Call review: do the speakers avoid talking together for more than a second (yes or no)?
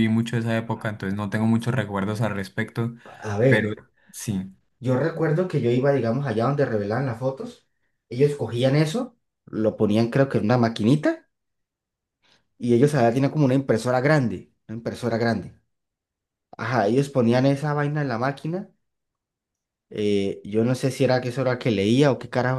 yes